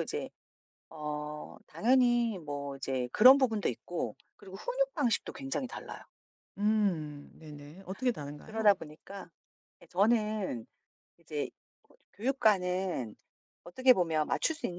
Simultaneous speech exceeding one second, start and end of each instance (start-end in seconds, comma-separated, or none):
none